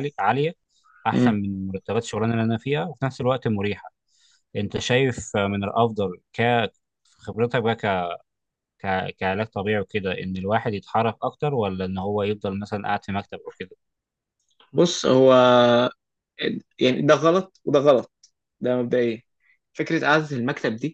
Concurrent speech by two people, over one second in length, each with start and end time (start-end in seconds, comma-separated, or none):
none